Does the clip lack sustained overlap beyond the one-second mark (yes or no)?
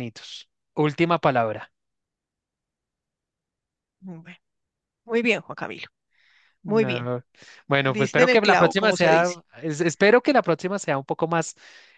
no